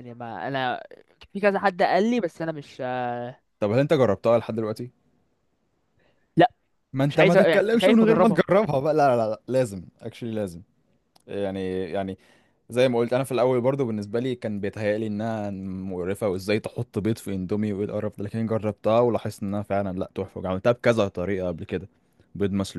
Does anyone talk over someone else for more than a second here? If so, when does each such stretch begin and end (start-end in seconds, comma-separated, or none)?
7.1-8.4